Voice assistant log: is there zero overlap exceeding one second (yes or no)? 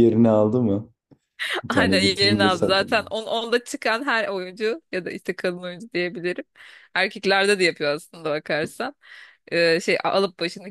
no